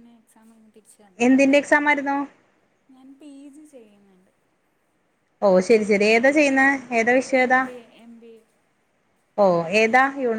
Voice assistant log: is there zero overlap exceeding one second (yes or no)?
yes